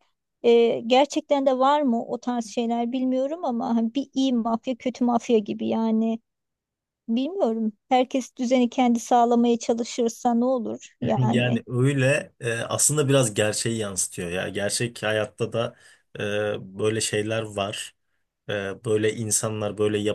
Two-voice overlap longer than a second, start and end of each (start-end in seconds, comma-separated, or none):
none